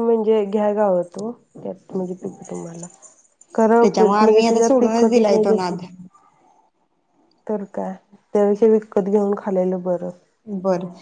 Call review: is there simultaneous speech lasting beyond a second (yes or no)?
yes